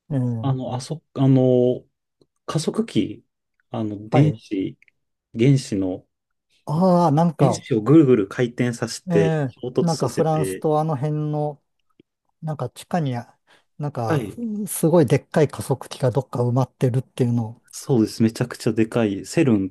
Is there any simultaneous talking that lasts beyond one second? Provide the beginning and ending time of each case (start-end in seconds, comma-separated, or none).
9.1-10.7